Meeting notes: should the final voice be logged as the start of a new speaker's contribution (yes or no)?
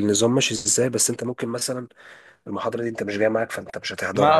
yes